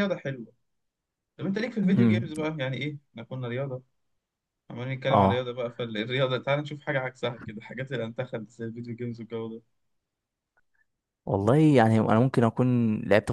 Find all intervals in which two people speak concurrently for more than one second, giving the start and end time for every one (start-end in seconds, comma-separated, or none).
none